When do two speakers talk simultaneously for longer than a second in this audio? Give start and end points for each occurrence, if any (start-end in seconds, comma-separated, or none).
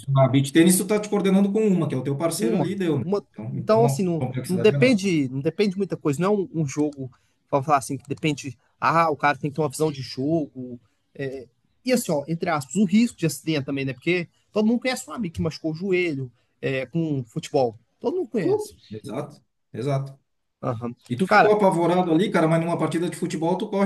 2.4-5.0